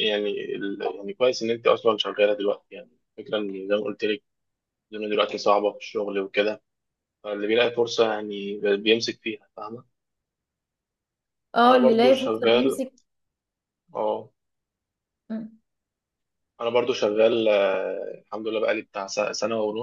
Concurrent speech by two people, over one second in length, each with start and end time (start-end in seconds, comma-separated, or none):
11.6-12.8